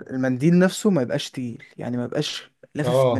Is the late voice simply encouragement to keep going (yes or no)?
no